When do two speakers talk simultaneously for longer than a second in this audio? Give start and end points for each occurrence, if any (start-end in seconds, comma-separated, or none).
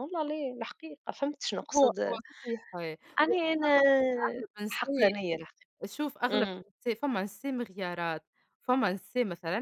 none